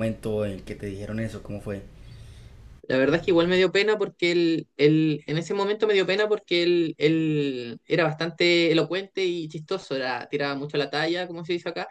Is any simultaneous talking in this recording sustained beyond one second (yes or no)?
no